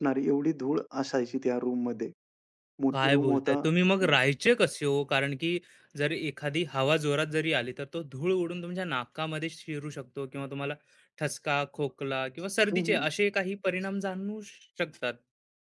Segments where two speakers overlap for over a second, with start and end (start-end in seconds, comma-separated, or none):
2.9-4.2